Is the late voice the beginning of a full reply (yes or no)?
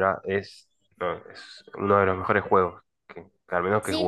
yes